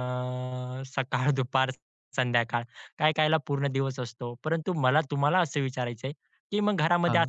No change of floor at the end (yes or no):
yes